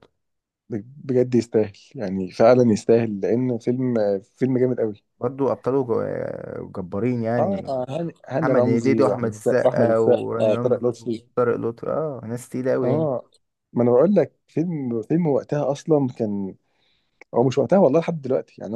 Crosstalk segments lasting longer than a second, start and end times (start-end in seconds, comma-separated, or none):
8.4-11.2